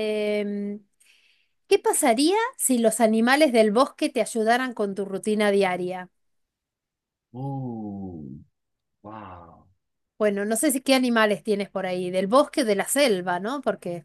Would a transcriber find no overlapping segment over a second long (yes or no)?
yes